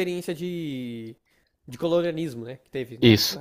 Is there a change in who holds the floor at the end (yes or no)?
yes